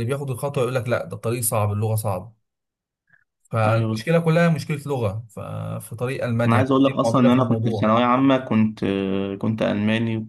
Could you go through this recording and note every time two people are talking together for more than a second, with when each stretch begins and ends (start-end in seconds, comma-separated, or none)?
6.5-8.0